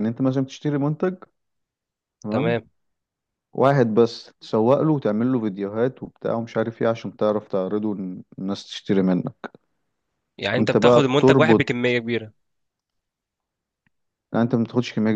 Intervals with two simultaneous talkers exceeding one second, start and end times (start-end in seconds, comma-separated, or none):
10.6-11.9